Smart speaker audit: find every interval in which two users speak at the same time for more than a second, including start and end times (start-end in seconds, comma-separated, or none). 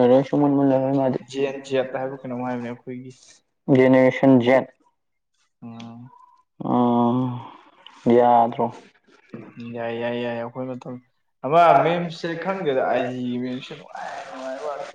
none